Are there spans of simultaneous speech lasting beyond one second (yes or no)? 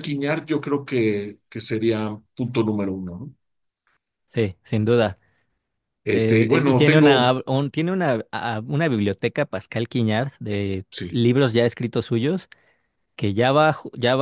yes